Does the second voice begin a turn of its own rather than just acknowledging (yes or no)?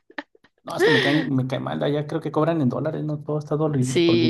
yes